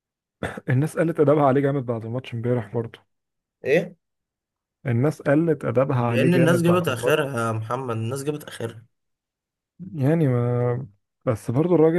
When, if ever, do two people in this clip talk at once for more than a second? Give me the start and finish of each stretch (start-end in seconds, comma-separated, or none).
6.0-7.3